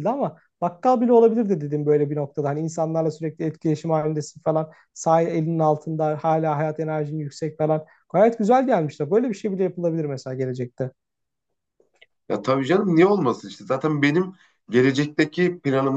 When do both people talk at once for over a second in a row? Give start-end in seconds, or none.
none